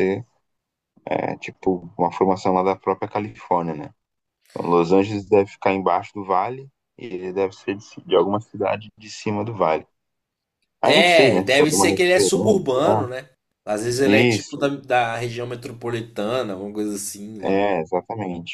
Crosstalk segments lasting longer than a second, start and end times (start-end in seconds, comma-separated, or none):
10.8-13.1